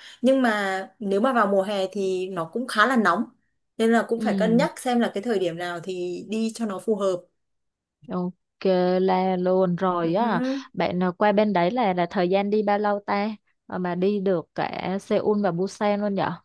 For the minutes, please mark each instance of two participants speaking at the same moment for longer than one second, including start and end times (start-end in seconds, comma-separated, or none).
none